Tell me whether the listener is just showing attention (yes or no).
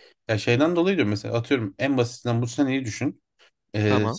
yes